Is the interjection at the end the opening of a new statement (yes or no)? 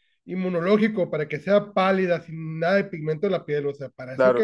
yes